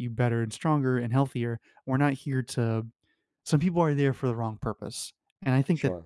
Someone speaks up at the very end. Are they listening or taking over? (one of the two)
listening